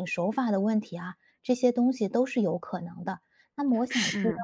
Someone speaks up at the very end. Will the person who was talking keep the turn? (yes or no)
yes